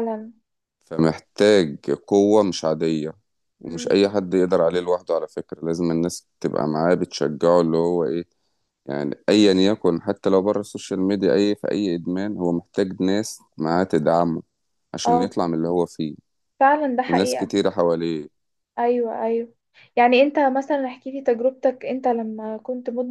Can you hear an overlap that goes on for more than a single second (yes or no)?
no